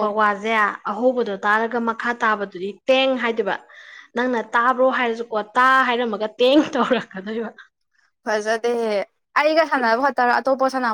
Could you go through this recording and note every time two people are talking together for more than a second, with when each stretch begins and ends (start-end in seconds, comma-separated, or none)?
none